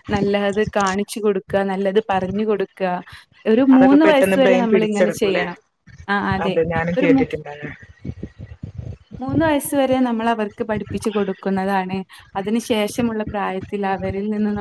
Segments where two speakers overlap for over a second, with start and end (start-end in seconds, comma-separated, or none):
3.8-5.4